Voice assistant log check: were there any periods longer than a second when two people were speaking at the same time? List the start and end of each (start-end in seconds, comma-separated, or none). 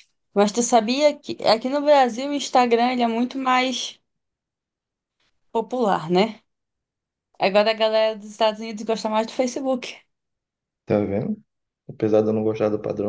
none